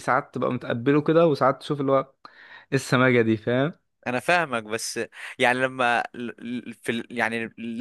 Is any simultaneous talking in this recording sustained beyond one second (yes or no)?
no